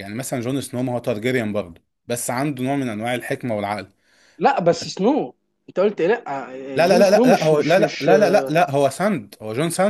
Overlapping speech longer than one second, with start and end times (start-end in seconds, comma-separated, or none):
6.7-8.1